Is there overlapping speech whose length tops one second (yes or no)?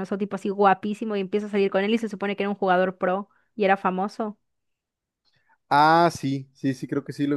no